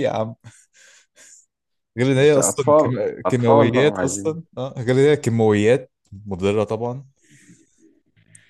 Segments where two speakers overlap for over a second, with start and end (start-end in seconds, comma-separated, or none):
2.2-4.4